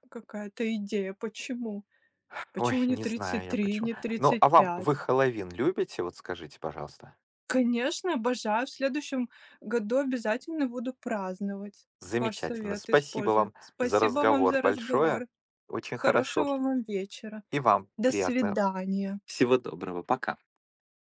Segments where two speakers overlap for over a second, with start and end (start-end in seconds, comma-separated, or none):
2.6-5.0, 12.0-15.2